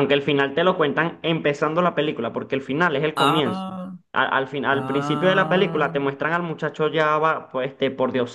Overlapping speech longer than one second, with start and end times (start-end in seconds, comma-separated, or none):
4.7-5.9